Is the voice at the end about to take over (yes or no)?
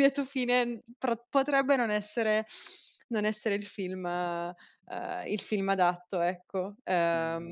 yes